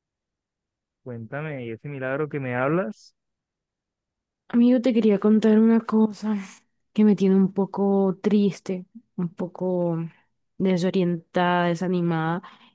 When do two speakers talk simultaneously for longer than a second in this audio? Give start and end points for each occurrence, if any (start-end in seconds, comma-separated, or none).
none